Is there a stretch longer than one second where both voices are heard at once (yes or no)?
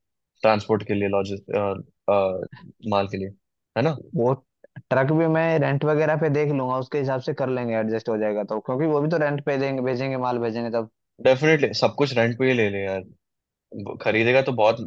no